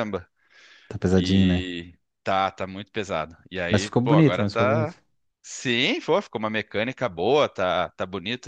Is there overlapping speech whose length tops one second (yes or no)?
yes